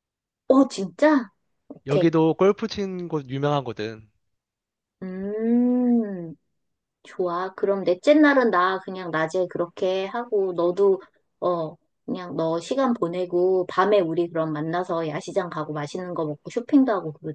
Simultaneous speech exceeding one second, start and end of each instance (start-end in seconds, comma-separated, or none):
none